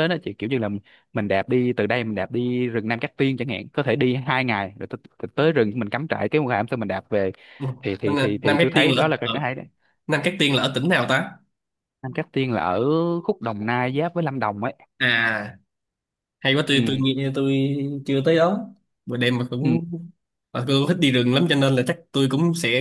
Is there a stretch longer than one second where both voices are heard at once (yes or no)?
yes